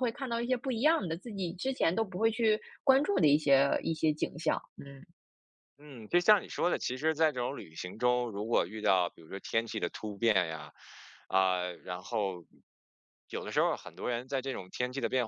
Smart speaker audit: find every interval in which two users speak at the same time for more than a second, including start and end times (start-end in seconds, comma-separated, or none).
none